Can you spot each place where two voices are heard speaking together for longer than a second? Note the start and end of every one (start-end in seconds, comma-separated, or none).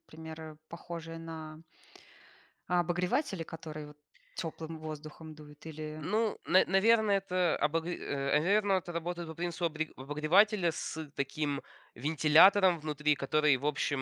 none